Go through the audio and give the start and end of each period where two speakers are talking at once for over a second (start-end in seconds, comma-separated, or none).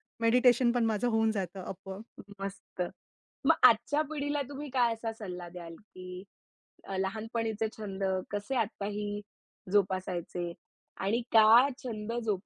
none